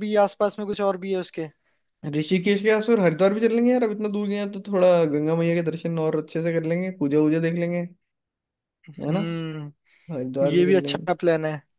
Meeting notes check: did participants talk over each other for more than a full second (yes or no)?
no